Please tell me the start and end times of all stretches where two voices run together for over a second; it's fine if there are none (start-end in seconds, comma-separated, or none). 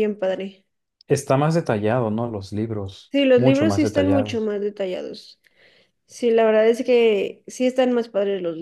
3.1-4.5